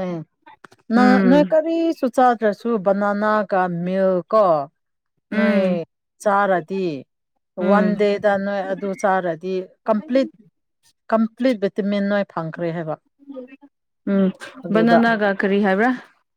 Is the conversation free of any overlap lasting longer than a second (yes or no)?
yes